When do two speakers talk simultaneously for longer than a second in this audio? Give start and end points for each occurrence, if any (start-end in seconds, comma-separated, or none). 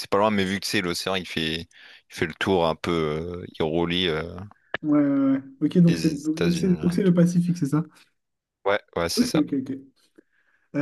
5.9-7.2